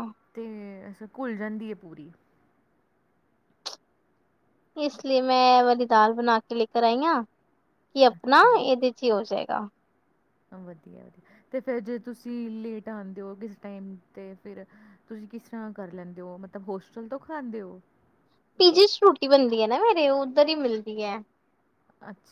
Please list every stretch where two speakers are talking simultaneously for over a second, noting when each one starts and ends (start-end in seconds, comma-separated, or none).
none